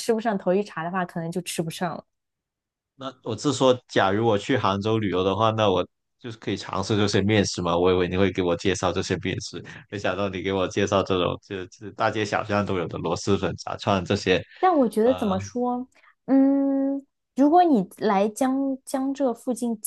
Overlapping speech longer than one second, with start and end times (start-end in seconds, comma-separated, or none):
none